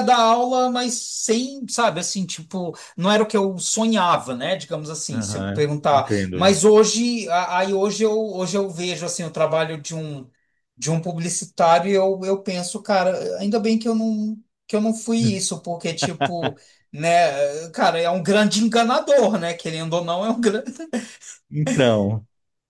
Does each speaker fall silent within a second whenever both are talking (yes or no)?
no